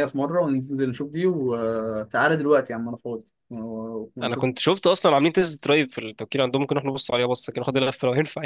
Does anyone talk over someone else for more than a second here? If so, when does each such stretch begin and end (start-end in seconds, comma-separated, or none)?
none